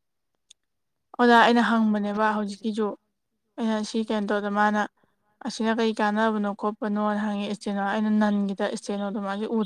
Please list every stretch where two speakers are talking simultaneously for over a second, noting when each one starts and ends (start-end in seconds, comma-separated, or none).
1.3-2.7